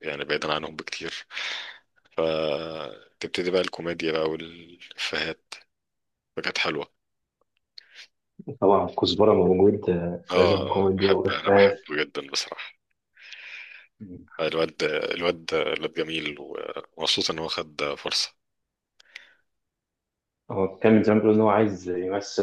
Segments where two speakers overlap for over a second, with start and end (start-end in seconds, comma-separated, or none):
10.3-11.8